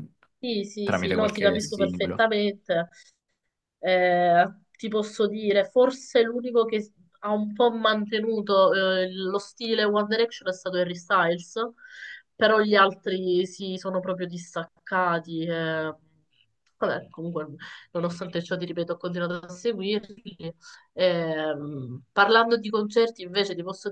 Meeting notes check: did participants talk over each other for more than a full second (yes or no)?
yes